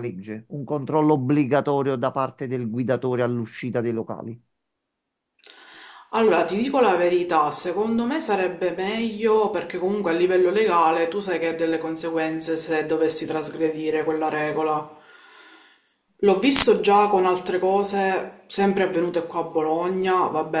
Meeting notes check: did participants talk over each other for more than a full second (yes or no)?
no